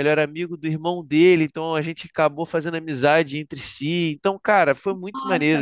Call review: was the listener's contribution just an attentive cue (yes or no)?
no